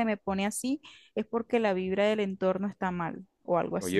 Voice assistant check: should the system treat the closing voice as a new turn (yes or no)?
yes